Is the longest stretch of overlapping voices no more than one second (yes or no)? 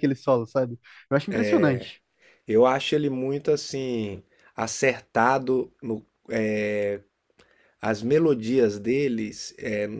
yes